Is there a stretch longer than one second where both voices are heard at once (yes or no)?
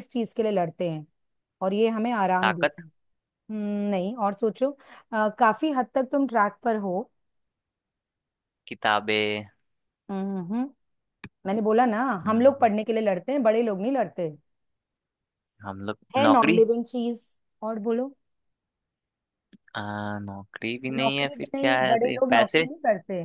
yes